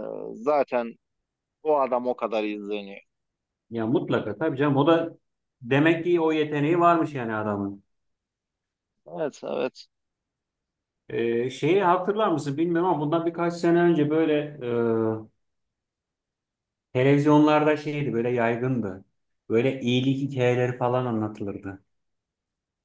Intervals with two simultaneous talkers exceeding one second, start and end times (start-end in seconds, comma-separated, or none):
none